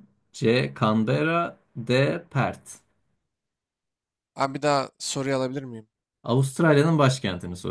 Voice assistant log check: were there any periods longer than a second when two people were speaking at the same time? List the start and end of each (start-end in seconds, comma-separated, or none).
none